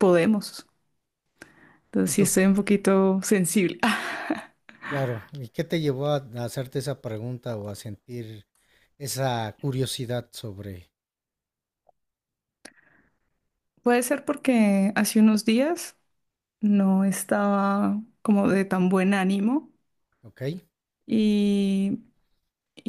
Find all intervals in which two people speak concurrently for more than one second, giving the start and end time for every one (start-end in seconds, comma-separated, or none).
none